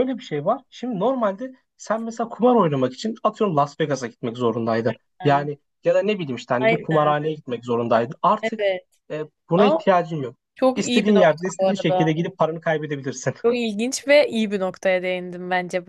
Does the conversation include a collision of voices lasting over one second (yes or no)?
yes